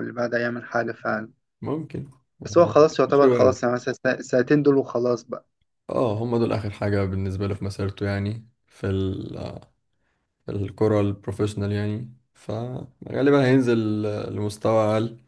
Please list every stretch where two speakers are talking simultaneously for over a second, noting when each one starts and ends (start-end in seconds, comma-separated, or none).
none